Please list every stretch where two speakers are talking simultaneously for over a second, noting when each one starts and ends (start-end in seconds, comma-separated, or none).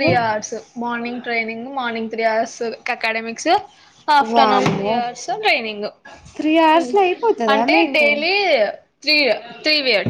none